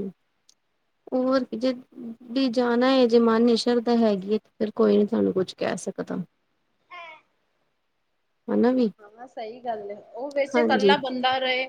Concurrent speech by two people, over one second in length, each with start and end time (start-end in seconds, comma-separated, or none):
none